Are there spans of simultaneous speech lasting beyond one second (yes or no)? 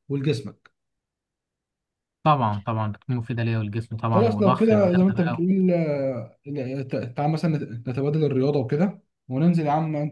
yes